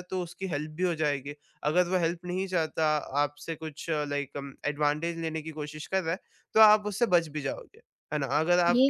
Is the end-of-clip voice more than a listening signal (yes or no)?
no